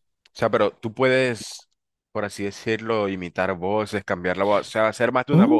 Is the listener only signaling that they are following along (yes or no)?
no